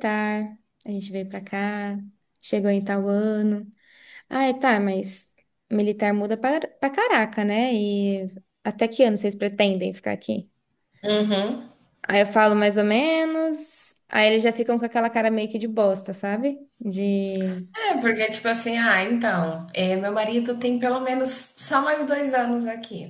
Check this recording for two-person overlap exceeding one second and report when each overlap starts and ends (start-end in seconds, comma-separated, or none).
none